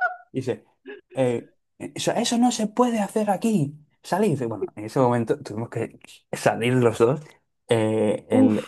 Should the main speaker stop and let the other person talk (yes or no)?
no